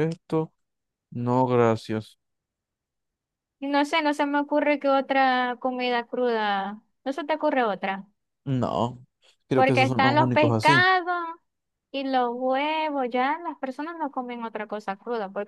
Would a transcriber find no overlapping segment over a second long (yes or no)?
no